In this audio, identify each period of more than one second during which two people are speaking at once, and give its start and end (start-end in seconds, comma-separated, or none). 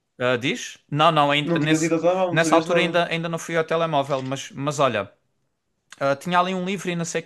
1.4-3.0